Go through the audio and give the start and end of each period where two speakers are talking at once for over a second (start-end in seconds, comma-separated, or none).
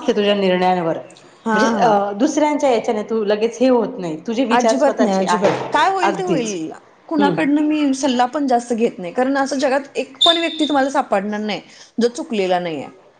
4.5-6.6